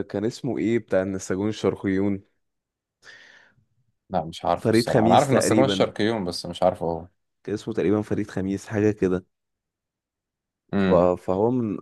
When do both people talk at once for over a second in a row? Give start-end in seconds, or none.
4.5-5.9